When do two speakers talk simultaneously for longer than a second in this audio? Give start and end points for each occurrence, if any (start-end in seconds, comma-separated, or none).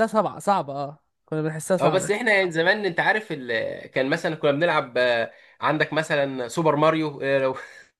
none